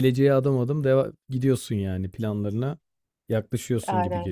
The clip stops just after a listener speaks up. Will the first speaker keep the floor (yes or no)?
no